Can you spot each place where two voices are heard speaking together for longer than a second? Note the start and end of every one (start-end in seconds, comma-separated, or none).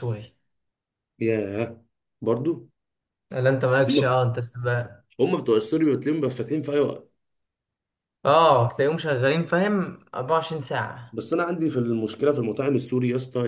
none